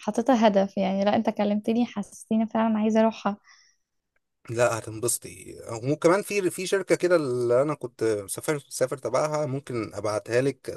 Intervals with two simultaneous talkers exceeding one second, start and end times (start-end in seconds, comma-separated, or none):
none